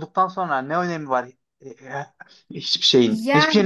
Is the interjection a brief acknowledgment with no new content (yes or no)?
no